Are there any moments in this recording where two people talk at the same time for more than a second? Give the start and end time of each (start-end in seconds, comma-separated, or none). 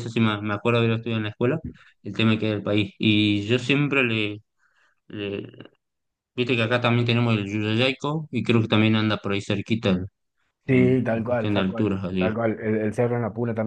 10.7-12.3